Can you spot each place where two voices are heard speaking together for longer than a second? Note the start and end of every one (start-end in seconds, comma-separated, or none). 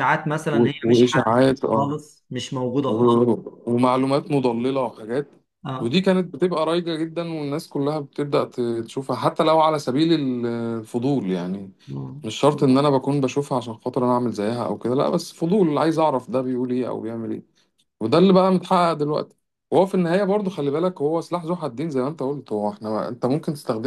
0.5-1.9